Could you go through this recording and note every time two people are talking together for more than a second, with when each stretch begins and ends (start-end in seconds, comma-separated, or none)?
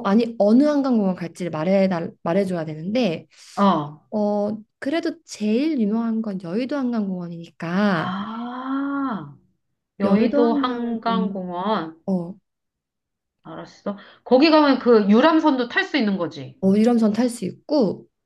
10.0-11.4